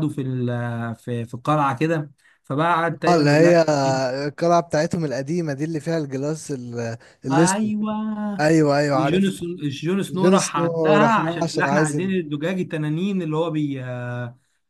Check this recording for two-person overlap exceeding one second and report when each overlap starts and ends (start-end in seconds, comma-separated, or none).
10.1-12.2